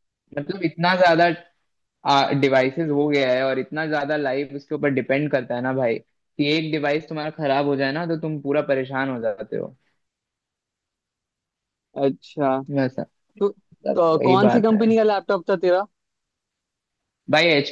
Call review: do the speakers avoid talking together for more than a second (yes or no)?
no